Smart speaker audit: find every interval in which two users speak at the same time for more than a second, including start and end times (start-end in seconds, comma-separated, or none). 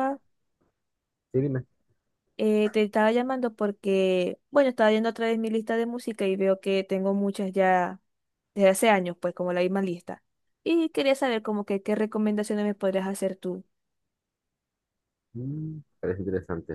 none